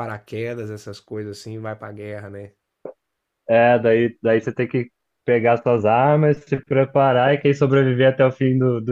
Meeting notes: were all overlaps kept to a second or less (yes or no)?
yes